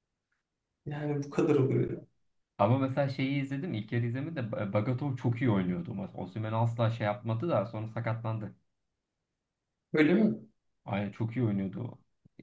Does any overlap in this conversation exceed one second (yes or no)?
no